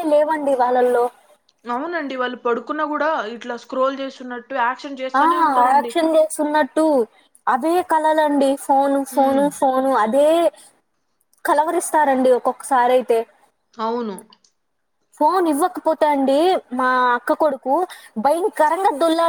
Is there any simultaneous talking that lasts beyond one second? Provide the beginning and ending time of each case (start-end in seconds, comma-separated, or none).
none